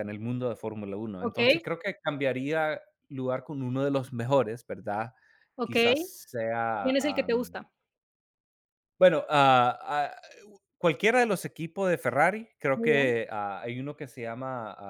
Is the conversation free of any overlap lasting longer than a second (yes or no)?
yes